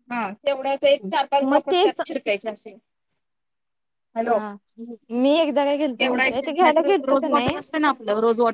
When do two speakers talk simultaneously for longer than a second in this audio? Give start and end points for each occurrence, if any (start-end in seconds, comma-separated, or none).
6.0-7.5